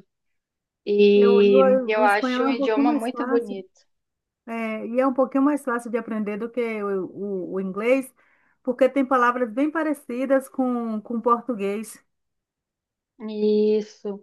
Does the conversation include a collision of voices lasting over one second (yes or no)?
yes